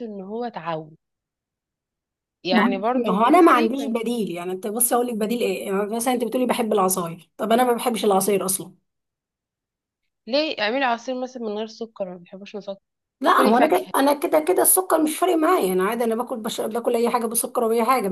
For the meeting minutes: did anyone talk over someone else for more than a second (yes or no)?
yes